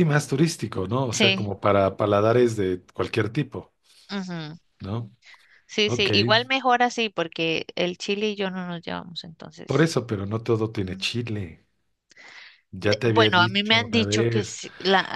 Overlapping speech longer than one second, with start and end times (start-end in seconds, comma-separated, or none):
12.8-14.6